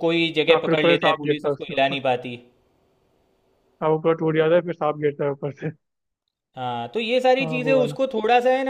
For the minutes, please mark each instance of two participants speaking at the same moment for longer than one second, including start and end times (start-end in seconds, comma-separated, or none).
0.5-2.0